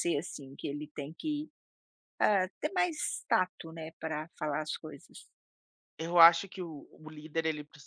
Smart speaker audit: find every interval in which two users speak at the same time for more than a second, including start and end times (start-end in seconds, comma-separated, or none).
none